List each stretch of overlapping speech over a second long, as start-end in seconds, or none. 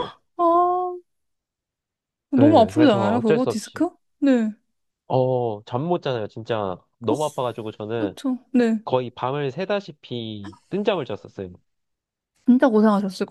2.4-3.8